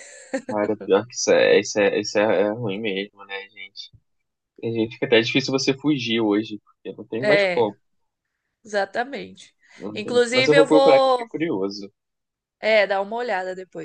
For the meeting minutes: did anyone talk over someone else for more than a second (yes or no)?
yes